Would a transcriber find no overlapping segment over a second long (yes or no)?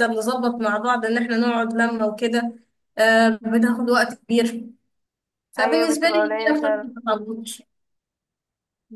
no